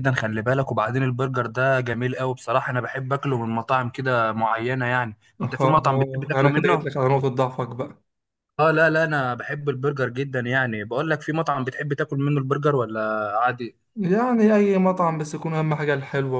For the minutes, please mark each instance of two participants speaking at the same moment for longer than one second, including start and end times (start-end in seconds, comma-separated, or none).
5.4-6.9